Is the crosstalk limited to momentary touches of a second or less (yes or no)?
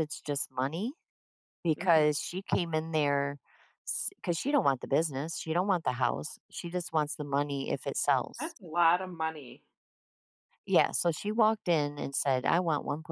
yes